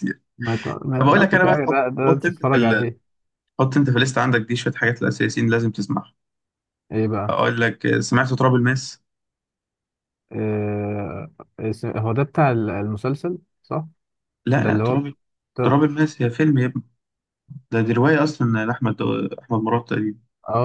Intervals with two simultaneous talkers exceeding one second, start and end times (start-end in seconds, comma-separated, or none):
1.0-2.9